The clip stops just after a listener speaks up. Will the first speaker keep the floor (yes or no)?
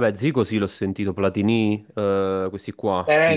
no